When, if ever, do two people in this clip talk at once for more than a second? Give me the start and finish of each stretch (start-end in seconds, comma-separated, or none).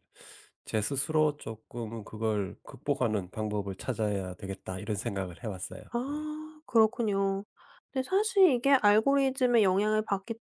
none